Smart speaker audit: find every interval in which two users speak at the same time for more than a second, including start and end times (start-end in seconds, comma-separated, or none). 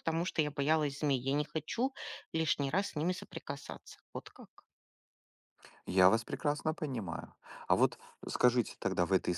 none